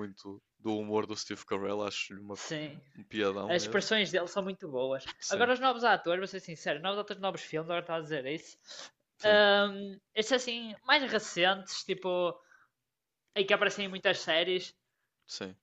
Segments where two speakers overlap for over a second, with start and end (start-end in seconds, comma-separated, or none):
none